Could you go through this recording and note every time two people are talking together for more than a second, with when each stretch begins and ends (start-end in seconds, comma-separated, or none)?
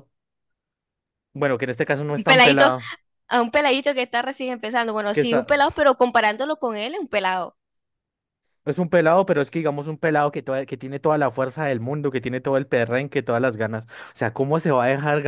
none